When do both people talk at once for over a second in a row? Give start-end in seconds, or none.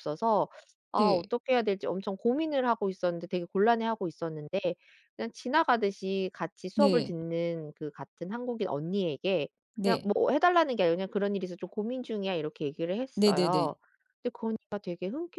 none